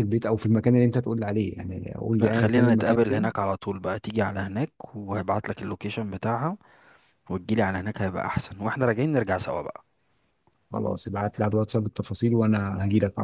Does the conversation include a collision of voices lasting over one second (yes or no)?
yes